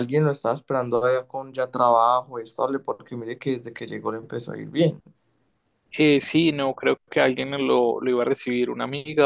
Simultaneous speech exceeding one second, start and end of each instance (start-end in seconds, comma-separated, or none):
none